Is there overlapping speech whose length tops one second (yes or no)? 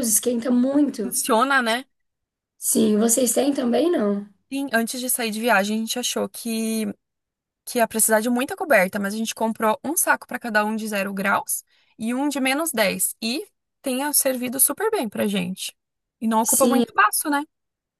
no